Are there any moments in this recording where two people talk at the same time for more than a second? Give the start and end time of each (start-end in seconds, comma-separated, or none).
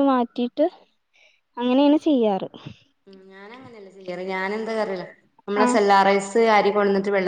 none